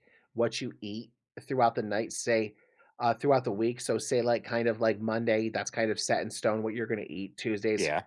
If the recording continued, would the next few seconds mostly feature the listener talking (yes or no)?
no